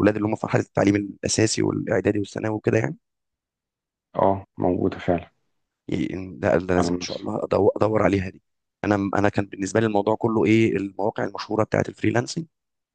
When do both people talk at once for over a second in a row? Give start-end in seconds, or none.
none